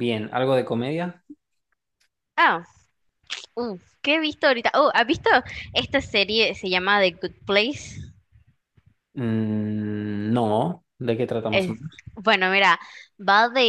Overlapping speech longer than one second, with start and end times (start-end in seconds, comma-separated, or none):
none